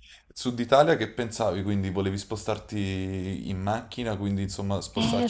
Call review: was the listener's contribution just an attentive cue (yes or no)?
no